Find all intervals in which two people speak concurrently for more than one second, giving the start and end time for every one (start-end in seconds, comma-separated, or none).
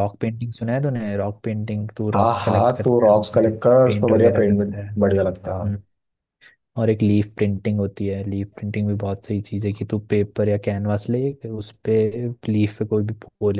2.1-4.9